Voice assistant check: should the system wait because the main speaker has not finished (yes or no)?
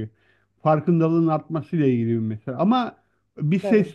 yes